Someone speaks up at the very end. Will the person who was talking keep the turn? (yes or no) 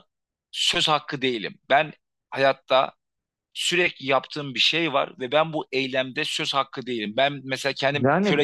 no